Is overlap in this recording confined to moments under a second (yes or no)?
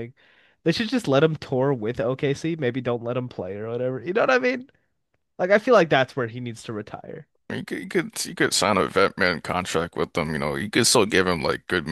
yes